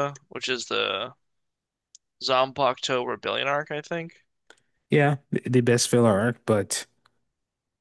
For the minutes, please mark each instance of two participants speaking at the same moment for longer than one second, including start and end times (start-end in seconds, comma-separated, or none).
none